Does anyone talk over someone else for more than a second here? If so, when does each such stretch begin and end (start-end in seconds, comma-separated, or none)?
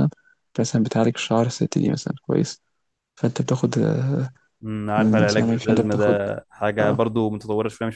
5.0-6.2